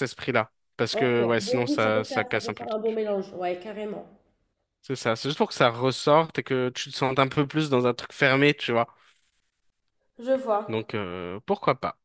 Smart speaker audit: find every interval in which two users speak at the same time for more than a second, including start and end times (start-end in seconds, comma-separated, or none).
0.9-3.0